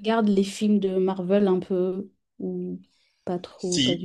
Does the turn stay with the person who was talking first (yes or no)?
no